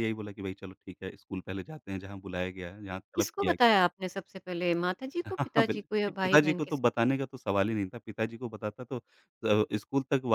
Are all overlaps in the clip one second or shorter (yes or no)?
no